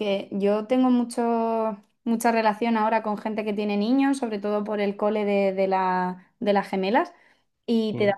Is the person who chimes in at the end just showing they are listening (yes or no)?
yes